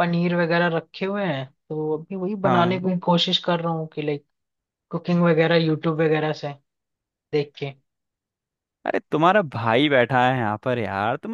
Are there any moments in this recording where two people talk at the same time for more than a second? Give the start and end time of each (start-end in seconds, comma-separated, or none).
none